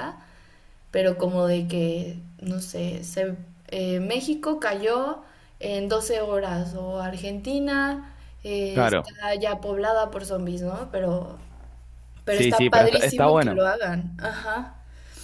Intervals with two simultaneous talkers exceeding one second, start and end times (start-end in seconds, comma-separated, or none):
12.3-13.7